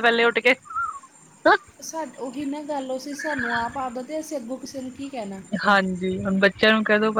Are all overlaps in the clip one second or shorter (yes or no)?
yes